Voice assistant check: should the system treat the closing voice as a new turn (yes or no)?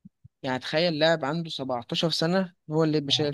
yes